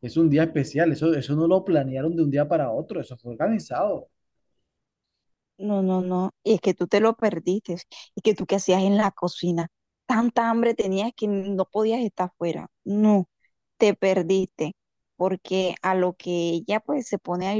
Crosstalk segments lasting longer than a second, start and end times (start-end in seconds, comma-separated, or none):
none